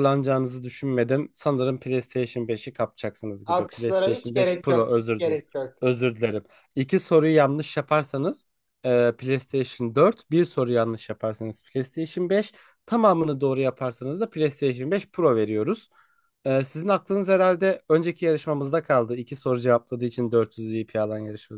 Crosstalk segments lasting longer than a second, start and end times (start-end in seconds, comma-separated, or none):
3.4-5.4